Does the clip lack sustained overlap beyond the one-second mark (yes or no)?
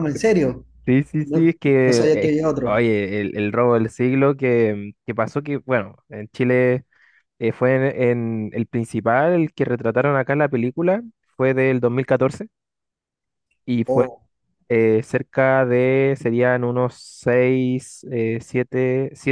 no